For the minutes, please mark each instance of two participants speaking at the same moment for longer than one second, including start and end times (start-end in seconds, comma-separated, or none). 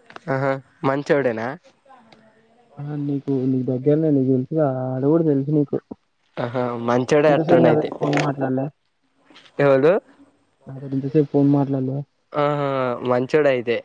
none